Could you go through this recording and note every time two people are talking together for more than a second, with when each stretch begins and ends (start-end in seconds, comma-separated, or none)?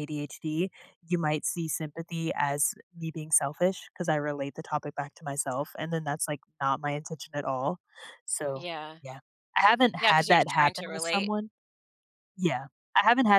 10.0-11.3